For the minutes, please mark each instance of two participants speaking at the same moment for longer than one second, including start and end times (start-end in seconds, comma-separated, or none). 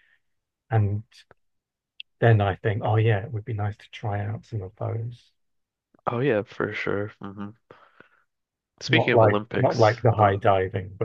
8.9-10.4